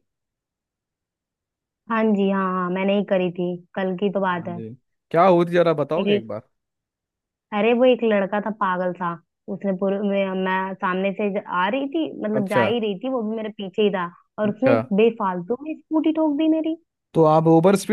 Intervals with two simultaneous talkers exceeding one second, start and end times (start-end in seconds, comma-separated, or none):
none